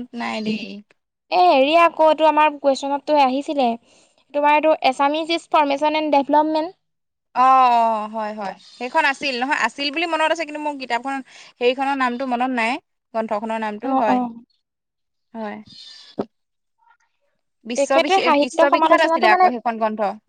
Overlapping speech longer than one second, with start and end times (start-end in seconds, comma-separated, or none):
17.8-19.4